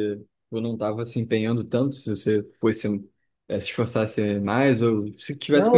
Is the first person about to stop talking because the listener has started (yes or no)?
yes